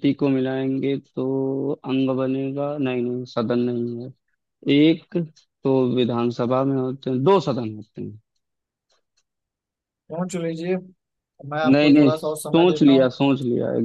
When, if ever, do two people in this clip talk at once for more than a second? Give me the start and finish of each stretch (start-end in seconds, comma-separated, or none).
11.7-13.1